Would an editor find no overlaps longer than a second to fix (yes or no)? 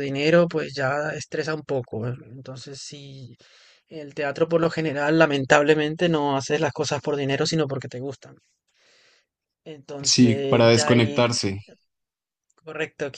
no